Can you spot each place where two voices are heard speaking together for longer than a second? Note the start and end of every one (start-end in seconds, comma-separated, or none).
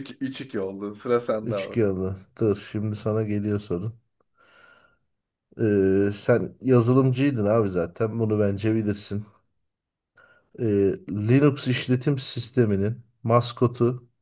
none